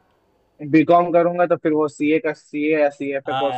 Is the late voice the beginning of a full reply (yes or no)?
yes